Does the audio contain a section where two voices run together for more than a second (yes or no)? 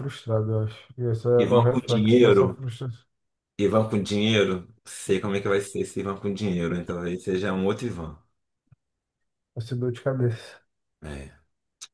yes